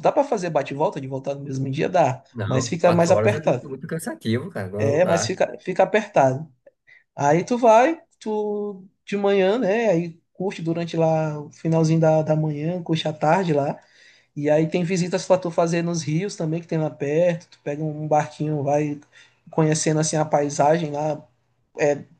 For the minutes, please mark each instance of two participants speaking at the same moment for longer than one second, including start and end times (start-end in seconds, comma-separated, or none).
2.3-3.6